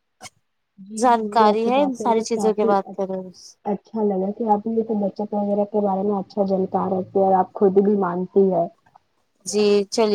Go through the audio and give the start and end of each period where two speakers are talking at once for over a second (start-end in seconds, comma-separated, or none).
1.0-2.7